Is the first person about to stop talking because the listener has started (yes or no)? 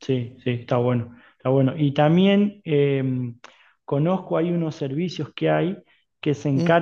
no